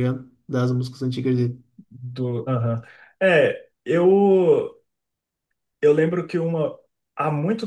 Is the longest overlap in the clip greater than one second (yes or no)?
no